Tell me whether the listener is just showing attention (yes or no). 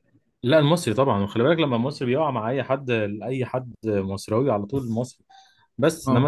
yes